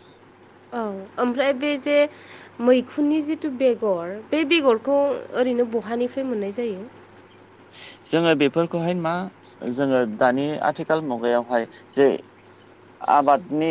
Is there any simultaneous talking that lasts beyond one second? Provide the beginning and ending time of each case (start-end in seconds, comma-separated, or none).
none